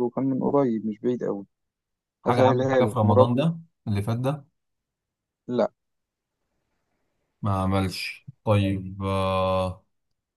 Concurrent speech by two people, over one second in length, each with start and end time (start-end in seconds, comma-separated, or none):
2.2-3.5